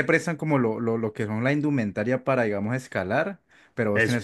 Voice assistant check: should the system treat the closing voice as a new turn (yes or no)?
no